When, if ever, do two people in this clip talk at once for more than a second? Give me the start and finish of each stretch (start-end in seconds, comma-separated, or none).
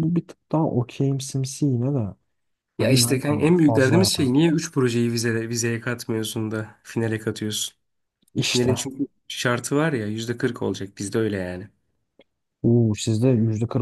2.8-4.1